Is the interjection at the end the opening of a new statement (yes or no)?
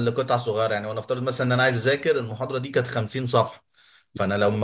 no